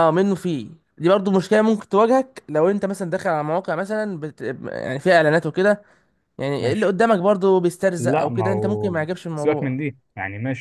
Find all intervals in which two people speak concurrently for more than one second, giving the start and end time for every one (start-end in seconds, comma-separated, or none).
8.0-9.8